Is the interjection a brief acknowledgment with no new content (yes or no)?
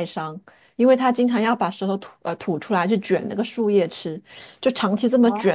yes